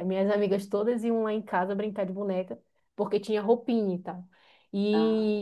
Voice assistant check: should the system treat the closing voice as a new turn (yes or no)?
no